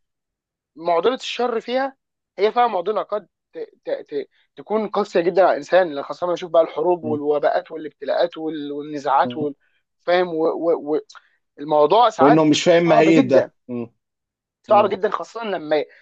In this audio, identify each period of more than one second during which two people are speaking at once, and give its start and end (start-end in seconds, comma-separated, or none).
12.2-13.5